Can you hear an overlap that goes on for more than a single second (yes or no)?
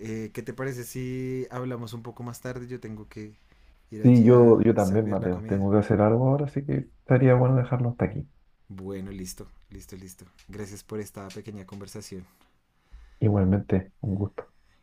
yes